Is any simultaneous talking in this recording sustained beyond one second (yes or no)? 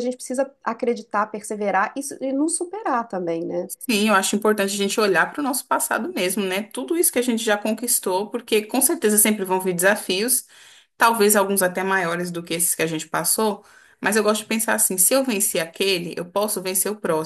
no